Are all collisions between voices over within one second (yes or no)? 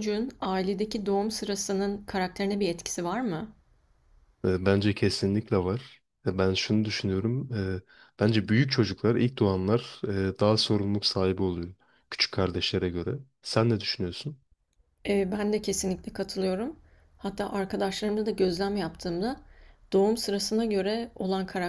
yes